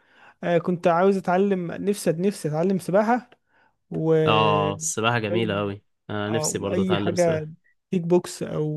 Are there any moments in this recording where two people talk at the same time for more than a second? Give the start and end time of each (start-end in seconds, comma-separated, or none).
6.3-7.5